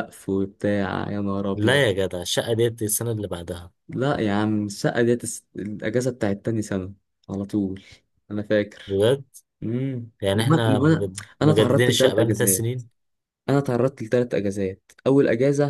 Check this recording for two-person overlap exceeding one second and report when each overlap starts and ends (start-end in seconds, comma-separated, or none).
10.2-12.8